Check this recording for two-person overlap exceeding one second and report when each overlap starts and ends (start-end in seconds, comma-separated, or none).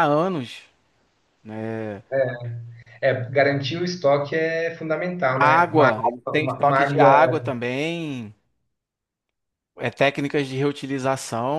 5.3-7.1